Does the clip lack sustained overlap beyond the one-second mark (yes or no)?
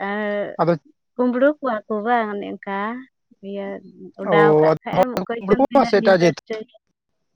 no